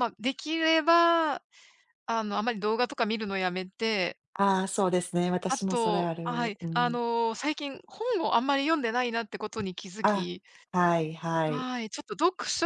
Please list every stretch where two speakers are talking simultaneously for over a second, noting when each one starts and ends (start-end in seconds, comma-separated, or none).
5.5-7.0